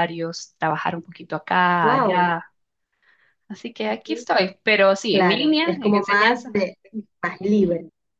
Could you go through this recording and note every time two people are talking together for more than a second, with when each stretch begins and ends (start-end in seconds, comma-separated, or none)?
5.1-6.5